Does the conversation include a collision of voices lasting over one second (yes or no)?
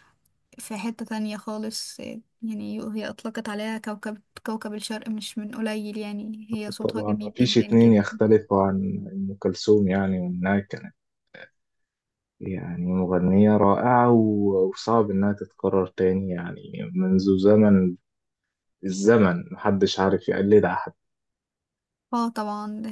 yes